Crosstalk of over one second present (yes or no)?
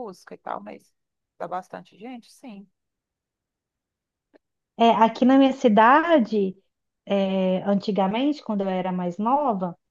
no